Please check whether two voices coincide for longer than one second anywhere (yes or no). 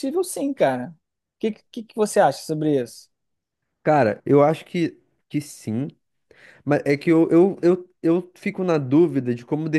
no